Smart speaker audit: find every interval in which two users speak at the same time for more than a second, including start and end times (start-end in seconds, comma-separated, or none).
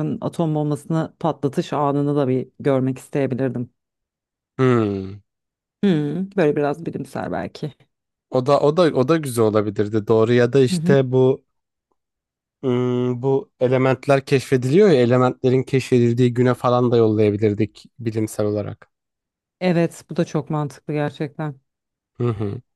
none